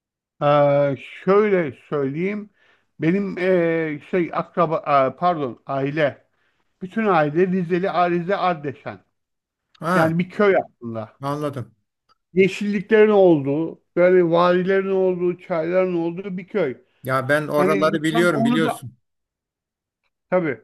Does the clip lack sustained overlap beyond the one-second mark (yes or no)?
no